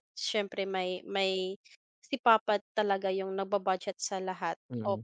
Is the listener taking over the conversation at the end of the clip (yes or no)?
yes